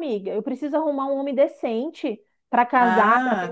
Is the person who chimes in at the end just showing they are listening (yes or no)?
no